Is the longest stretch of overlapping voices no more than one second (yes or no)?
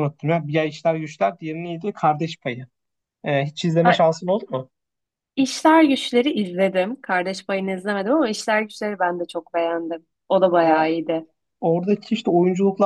yes